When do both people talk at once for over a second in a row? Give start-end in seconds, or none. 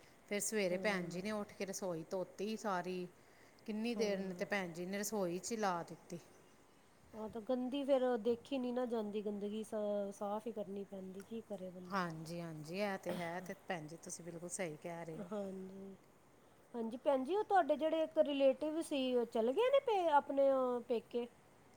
none